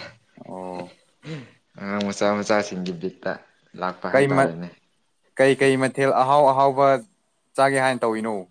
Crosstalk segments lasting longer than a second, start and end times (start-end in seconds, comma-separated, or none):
none